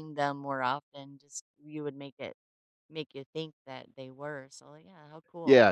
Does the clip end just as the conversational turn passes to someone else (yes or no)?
yes